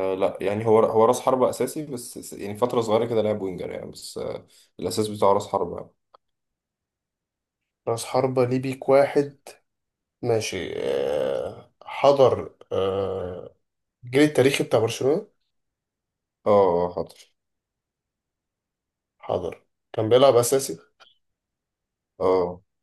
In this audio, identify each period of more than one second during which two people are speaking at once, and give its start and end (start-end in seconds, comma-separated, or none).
none